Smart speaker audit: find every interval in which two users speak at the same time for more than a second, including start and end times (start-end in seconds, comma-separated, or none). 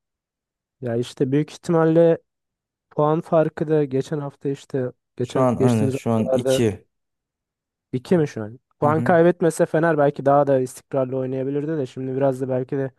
5.2-6.6